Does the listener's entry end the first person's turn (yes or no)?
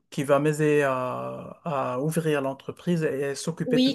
yes